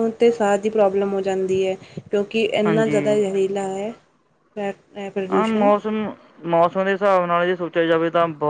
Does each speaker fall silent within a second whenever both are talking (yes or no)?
yes